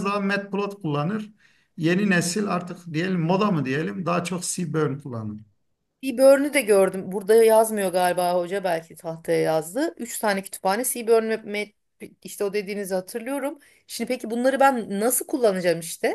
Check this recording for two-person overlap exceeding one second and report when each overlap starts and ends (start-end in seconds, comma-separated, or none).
none